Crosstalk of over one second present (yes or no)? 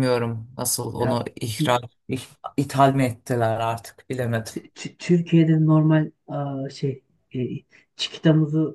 no